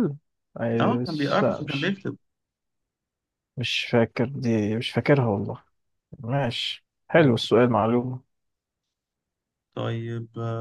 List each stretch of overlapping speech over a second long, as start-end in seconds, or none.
0.8-2.0